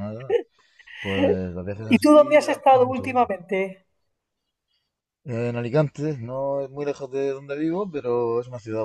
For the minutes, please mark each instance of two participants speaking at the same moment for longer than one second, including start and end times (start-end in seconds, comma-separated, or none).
1.9-3.3